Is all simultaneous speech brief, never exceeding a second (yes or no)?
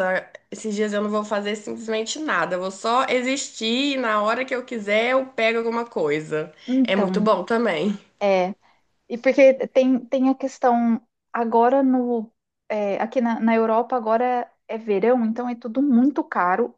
yes